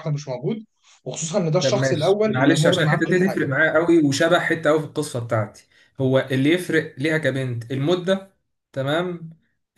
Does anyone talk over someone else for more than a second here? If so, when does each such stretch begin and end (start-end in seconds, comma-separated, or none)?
1.6-3.4